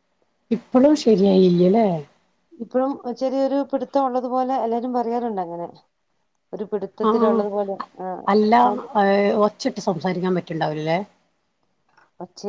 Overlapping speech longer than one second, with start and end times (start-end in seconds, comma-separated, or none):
none